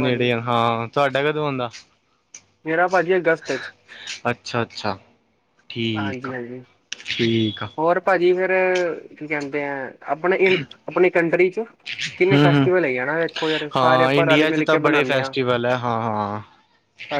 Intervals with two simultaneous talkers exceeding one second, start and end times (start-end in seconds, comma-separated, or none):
13.7-15.4